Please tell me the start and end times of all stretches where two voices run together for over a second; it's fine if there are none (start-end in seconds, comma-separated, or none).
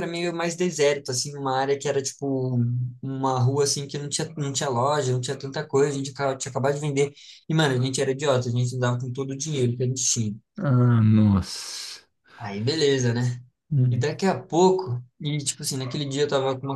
none